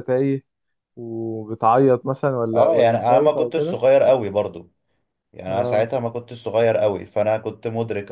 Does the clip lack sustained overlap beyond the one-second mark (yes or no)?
no